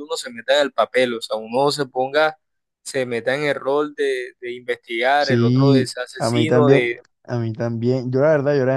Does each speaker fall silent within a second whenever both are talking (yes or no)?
no